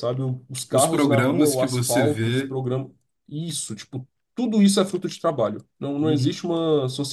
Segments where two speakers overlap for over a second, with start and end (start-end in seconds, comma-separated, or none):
0.7-2.6